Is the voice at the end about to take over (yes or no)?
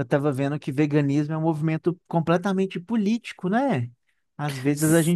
no